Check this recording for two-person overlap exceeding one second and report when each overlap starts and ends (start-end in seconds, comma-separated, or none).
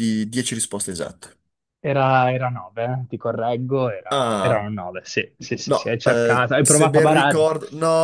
5.6-7.4